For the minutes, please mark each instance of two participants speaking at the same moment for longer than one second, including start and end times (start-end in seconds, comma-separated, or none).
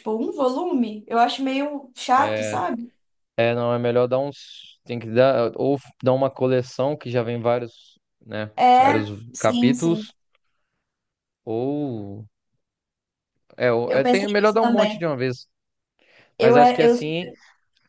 8.6-10.1, 13.9-15.1